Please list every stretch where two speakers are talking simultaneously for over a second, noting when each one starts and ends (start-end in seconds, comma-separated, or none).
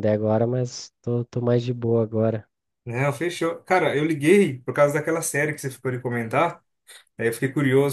none